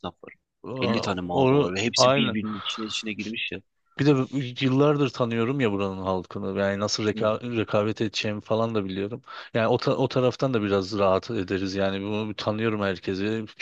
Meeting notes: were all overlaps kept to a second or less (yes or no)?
no